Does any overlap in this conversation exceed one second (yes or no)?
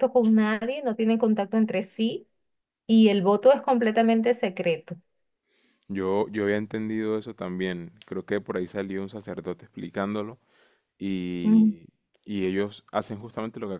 no